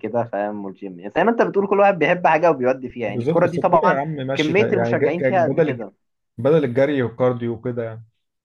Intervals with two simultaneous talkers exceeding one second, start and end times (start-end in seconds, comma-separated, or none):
3.1-5.8